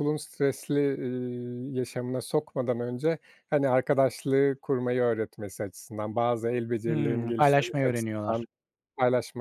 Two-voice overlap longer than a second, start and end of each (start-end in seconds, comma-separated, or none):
6.9-8.4